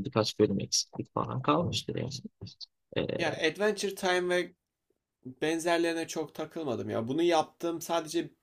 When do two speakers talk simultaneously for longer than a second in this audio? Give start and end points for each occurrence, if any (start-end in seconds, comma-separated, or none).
none